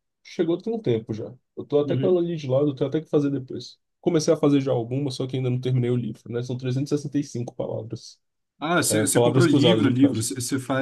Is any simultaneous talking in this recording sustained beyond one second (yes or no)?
yes